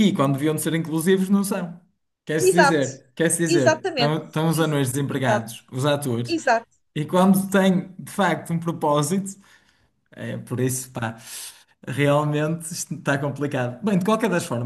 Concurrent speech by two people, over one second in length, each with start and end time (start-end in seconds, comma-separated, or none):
3.5-5.5